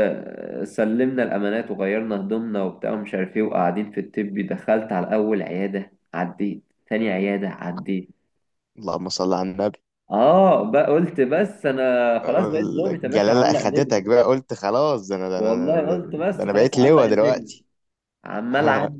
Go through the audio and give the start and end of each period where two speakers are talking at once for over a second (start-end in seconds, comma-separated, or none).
12.2-14.0, 15.4-17.5